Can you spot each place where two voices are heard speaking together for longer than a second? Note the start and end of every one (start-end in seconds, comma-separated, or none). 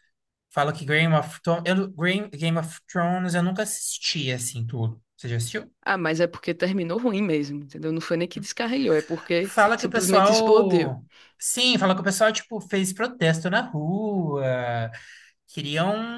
9.4-10.9